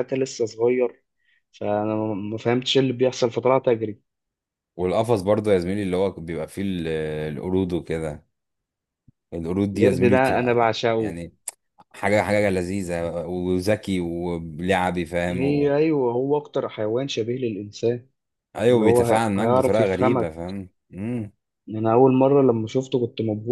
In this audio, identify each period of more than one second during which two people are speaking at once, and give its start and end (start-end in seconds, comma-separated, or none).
9.7-11.1, 18.7-20.3